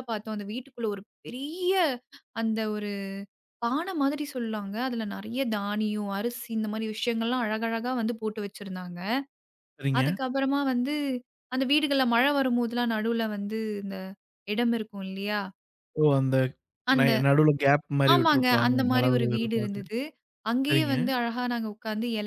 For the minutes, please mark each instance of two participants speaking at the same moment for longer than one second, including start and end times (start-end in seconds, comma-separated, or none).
18.1-19.8